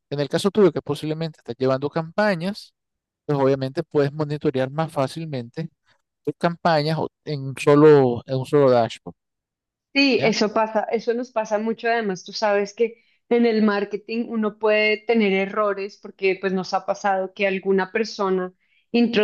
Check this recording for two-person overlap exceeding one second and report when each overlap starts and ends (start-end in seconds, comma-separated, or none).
none